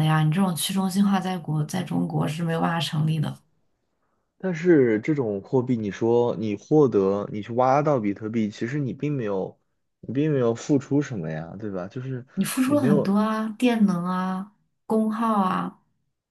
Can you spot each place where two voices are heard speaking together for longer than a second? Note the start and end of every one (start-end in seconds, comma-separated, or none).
none